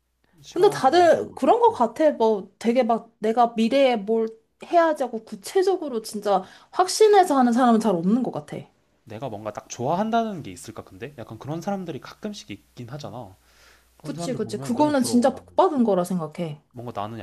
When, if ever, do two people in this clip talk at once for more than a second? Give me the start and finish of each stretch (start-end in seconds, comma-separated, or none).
0.5-1.9, 14.0-15.4